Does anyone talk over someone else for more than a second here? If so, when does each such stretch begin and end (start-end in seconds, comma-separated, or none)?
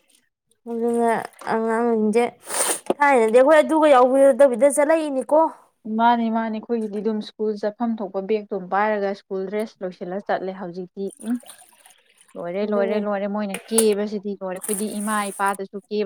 none